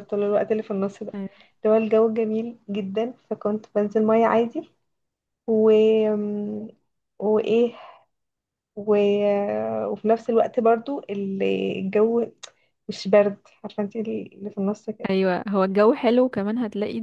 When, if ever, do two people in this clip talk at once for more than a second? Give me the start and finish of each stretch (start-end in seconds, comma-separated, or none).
none